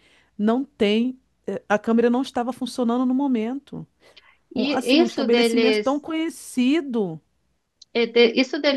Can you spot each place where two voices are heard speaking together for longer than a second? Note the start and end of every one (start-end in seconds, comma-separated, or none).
4.5-6.0